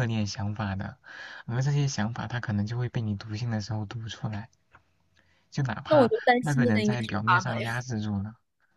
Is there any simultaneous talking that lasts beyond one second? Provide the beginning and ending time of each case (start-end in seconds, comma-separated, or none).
5.9-7.7